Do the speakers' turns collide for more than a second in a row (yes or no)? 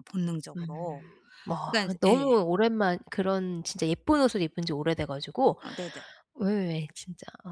no